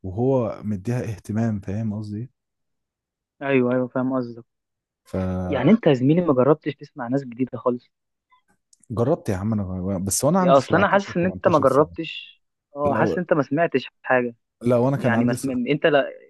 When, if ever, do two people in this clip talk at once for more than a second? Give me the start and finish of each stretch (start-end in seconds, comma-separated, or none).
10.4-11.9